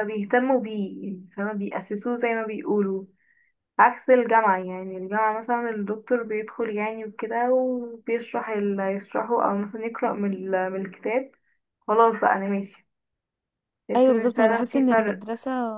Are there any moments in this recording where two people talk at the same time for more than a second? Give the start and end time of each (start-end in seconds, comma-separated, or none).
13.9-15.2